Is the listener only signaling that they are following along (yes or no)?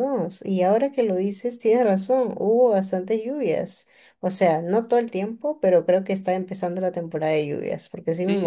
no